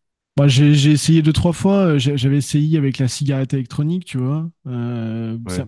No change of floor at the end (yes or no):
yes